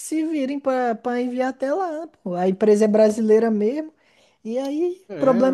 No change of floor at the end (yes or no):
yes